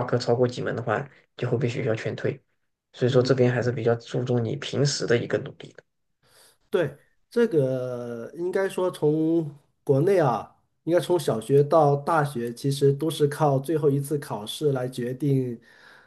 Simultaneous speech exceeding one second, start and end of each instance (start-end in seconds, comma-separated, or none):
none